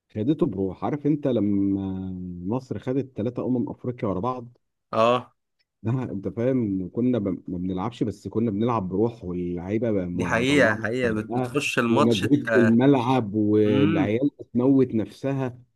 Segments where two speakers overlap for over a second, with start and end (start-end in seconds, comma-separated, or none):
10.1-12.8